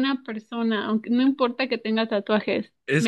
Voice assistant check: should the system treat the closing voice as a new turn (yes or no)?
yes